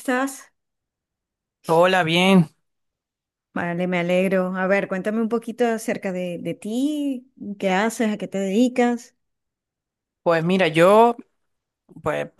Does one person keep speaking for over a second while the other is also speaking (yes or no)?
no